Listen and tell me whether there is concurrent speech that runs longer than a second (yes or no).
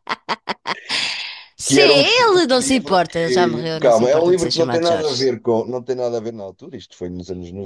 yes